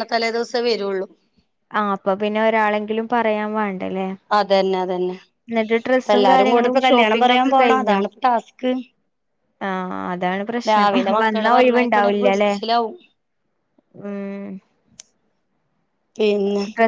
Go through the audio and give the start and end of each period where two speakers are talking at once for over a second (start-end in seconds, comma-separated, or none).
6.0-8.0, 10.7-12.5